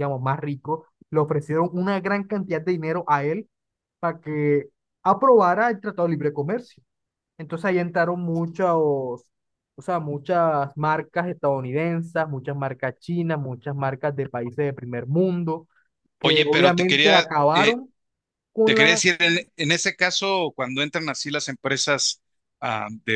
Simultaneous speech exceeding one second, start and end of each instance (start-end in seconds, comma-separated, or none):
16.2-17.8